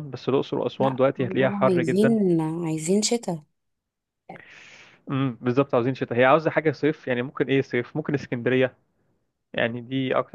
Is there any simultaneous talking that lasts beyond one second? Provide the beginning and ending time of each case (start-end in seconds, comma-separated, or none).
0.8-2.1